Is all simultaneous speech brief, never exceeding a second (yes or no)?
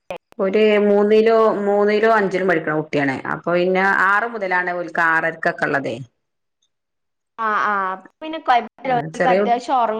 yes